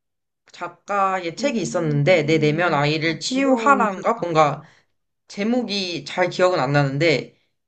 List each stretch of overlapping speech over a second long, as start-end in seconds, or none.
1.4-4.6